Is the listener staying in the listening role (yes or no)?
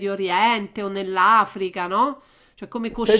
no